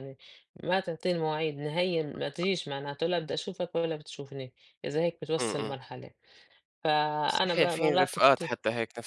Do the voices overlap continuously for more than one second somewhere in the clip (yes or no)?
yes